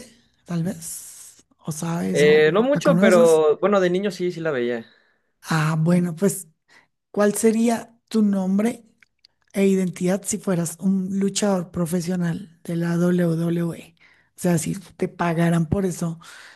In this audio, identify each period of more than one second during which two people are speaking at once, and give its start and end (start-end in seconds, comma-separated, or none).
2.1-3.4